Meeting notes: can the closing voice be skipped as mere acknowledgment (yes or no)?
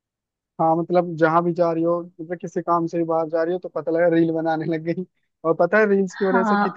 yes